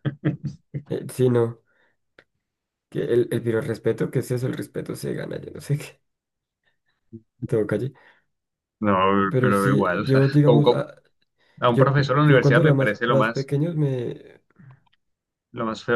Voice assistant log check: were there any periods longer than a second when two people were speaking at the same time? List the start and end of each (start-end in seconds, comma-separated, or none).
9.3-10.9, 11.7-13.5